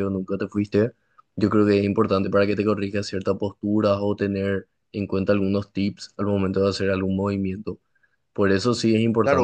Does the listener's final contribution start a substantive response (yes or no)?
yes